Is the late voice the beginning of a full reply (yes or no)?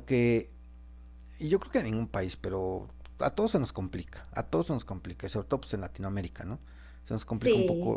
no